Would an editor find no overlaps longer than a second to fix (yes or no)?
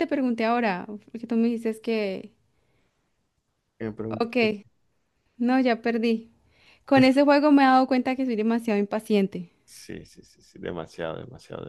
yes